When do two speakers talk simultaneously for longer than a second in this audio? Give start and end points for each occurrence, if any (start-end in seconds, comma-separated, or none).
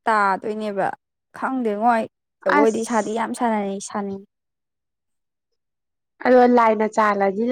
none